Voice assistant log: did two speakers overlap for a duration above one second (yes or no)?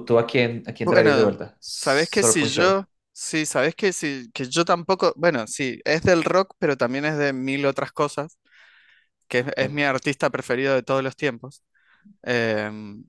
yes